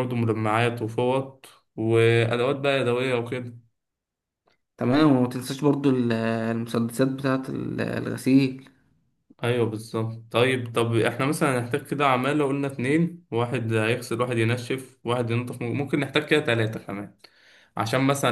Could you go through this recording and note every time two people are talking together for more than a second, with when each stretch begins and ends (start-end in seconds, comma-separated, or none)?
none